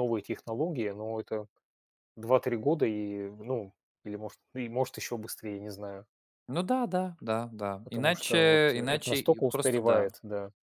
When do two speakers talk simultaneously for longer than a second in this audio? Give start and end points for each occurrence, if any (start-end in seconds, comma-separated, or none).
7.8-10.1